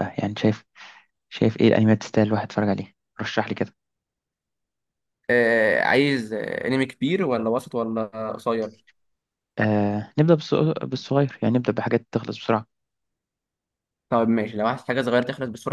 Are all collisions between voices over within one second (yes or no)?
yes